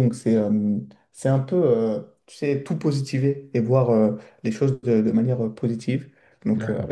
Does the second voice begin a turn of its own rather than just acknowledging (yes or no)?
no